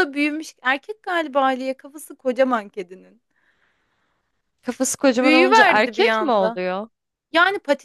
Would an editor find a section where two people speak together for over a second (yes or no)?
yes